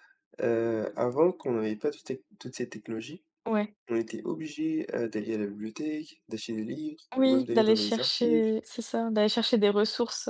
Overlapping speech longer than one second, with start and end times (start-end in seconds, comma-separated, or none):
7.2-8.5